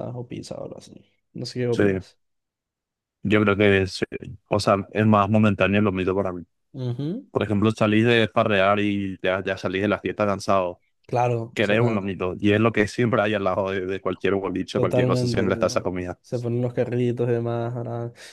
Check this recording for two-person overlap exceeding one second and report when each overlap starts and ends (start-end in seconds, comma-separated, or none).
14.7-16.2